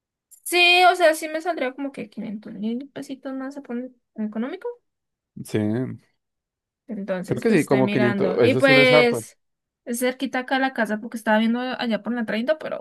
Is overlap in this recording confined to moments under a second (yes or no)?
no